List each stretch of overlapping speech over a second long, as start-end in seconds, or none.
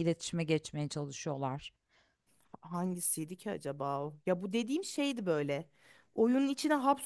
none